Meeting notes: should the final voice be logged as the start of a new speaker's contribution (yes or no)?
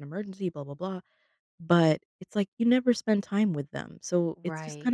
no